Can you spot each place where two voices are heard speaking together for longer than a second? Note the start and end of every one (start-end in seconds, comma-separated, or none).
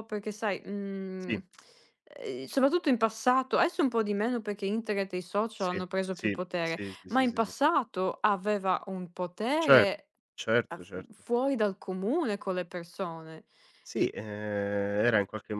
5.6-7.5